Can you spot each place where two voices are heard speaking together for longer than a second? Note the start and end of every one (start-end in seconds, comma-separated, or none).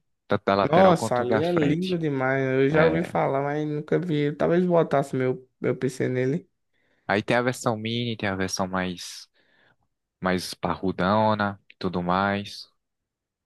0.6-2.0